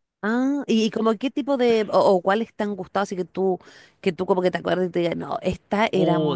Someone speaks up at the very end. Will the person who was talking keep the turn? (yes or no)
no